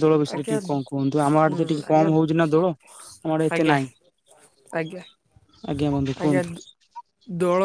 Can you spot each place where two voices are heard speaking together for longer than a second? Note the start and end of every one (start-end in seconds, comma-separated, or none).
0.6-2.1